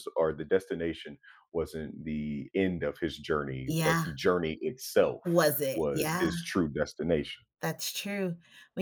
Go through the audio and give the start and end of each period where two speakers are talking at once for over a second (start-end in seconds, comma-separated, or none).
none